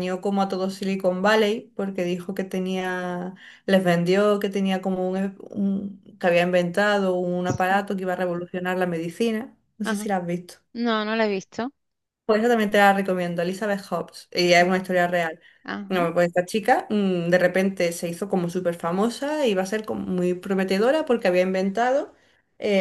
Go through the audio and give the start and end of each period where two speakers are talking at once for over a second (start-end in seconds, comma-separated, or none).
none